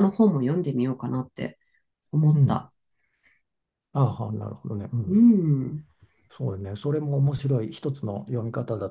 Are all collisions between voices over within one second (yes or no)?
yes